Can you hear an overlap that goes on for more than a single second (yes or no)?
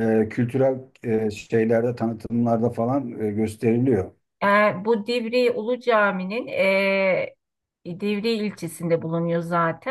no